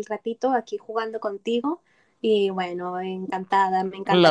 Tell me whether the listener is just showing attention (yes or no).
yes